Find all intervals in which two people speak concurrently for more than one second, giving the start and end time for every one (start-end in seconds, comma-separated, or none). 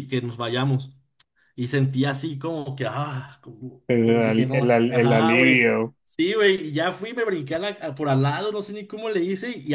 3.9-5.7